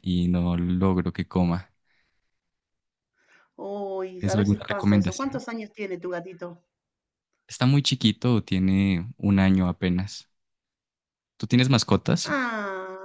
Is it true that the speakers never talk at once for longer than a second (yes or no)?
no